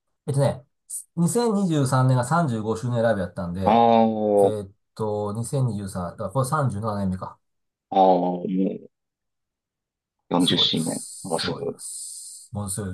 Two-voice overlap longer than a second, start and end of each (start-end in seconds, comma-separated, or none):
10.4-11.8